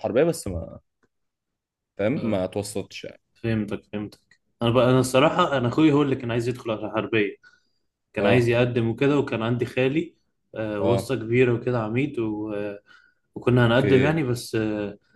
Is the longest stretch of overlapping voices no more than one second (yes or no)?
yes